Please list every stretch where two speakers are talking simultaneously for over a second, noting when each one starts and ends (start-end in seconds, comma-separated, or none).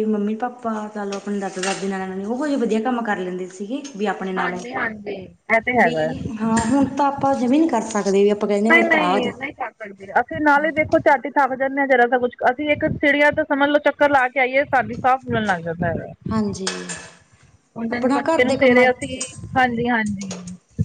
17.9-19.1